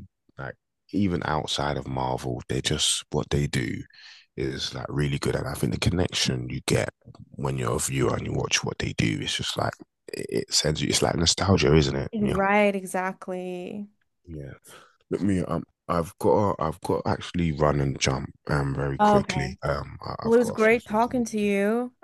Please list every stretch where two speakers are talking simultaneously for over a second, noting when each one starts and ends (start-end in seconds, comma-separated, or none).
20.2-21.5